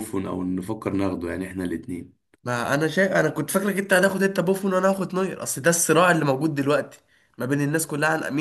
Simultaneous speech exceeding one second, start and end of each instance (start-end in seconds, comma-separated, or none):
none